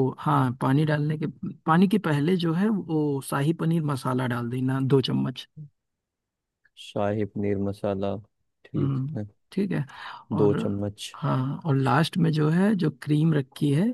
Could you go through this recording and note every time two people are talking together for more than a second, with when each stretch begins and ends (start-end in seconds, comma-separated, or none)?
none